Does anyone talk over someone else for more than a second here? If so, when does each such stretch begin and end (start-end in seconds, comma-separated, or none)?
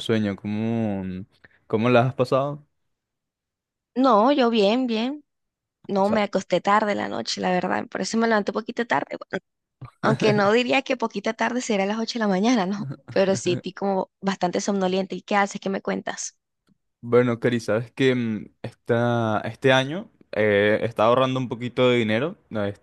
none